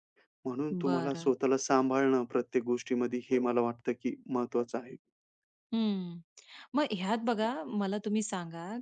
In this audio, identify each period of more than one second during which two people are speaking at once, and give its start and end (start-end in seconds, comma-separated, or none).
none